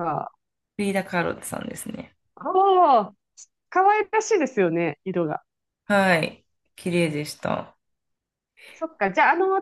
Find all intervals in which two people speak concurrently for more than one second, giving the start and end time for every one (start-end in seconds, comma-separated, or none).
none